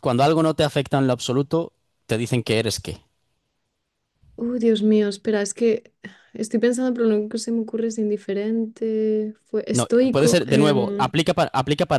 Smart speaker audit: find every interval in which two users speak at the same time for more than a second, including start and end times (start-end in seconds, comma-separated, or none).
9.7-11.1